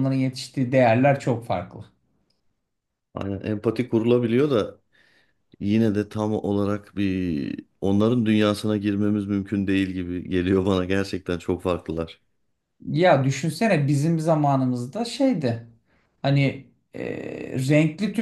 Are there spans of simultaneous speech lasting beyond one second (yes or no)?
no